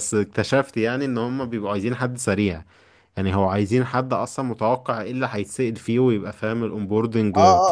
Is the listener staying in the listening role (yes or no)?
no